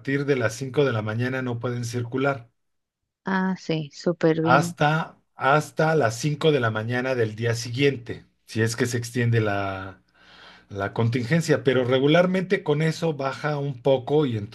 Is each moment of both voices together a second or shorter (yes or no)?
yes